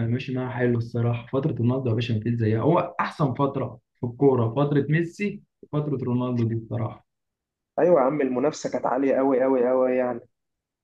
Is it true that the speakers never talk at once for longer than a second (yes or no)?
yes